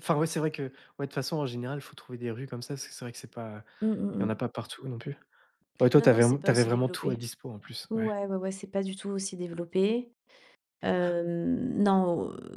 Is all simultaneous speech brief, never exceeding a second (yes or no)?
no